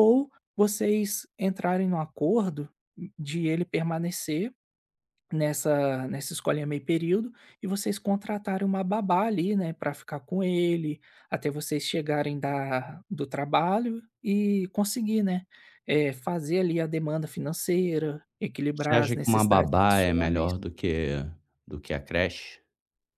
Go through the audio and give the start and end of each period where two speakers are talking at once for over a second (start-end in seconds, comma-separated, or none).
18.7-20.5